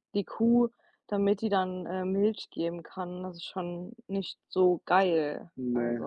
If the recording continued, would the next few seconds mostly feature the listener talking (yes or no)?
yes